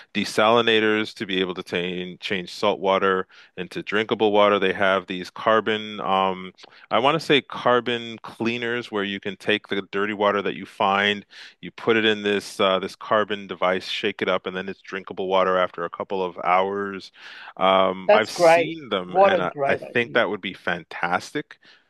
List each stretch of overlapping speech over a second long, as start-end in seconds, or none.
18.1-20.2